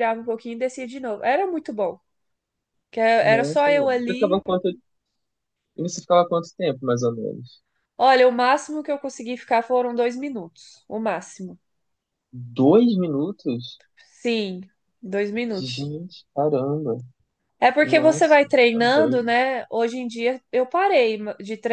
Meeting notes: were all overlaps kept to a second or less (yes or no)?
no